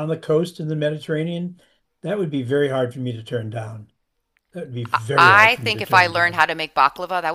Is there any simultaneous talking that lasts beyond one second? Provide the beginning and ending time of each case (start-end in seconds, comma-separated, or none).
5.2-6.5